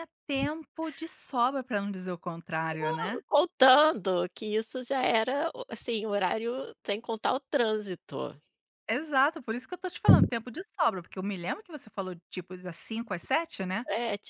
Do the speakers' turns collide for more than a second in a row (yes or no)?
no